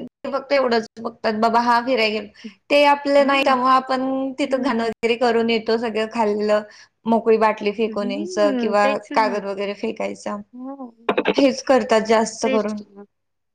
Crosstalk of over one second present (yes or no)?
yes